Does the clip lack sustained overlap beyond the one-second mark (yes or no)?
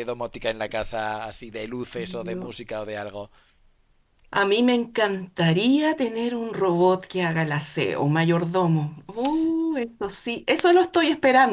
yes